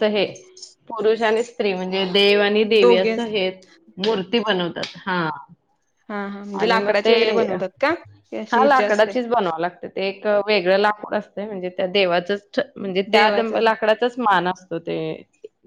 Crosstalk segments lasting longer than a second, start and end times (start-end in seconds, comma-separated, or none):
none